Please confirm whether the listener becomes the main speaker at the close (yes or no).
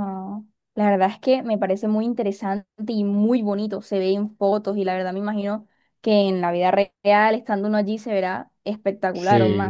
yes